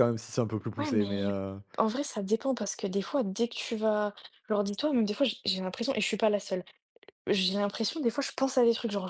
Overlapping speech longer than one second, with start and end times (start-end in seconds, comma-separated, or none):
none